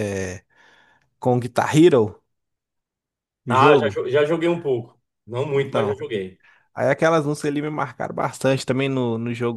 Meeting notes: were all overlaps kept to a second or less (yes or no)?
yes